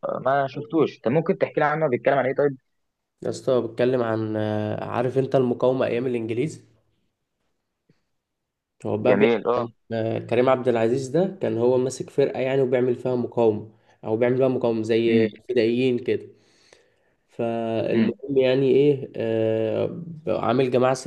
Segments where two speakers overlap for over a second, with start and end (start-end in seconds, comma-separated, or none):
none